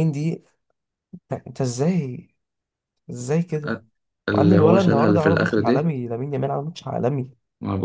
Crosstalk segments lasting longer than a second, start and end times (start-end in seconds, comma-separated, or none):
4.3-5.9